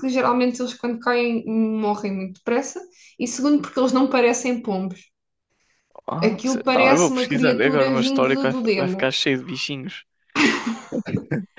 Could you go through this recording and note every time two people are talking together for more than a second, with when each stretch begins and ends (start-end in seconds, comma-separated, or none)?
6.2-9.1